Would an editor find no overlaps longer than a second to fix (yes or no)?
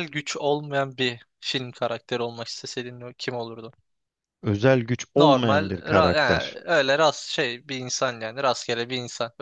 no